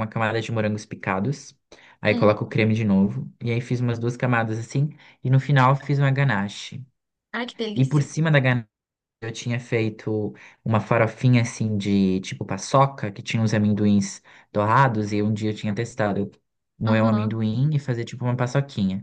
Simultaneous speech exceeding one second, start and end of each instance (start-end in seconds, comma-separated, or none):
none